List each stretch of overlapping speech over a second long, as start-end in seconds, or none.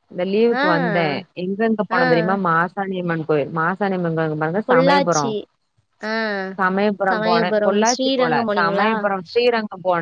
7.1-8.9